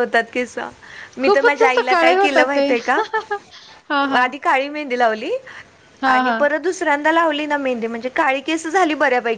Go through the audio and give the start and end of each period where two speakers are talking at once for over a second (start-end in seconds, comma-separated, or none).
1.2-2.7